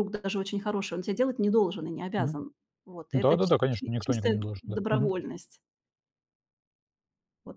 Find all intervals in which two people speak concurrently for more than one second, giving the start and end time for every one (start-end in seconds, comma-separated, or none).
3.1-5.1